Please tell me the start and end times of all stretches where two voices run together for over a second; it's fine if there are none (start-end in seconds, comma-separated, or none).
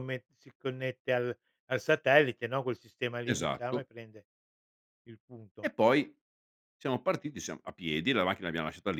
none